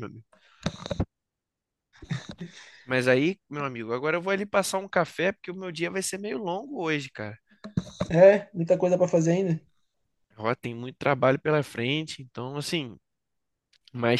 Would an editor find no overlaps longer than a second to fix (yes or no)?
yes